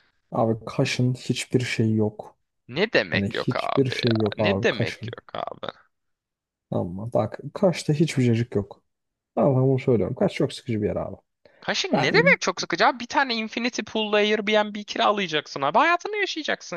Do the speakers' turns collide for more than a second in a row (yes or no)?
yes